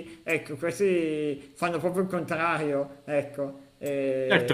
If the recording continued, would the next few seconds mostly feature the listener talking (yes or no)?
yes